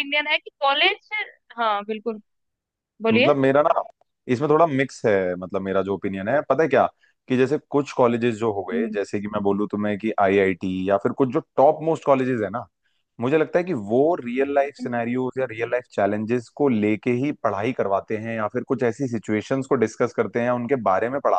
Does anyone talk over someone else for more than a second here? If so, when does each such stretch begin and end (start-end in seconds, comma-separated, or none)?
none